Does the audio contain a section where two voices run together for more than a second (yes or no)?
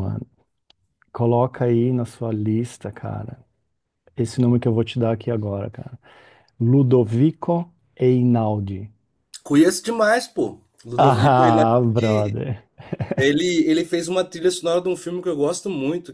yes